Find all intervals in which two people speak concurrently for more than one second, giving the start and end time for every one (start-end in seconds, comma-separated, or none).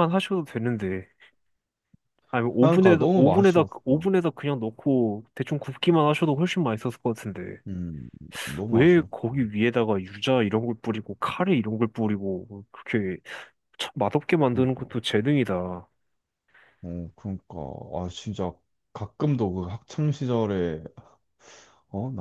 2.6-4.1